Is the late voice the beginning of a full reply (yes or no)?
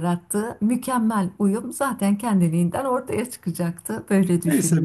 yes